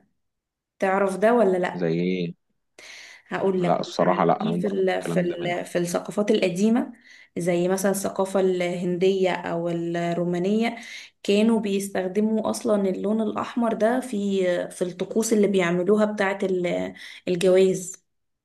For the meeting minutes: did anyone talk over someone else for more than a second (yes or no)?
yes